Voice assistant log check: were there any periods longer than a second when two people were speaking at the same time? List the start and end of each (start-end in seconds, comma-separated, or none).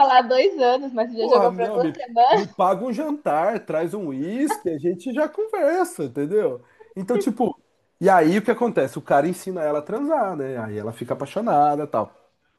1.2-2.6